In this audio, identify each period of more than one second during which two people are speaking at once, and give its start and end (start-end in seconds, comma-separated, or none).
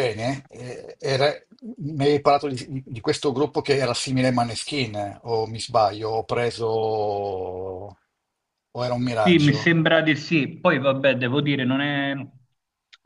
none